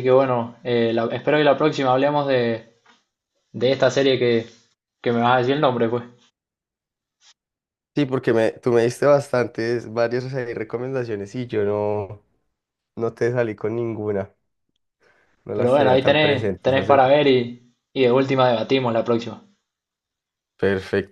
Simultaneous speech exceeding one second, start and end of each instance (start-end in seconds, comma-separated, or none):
15.5-17.0